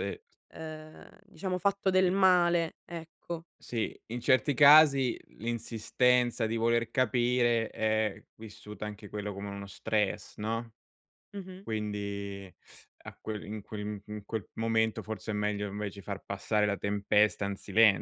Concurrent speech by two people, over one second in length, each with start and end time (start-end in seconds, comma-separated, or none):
none